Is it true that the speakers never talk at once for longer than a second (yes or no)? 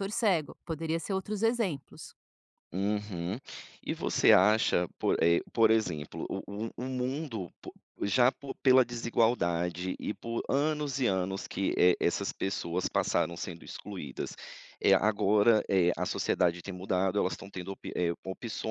yes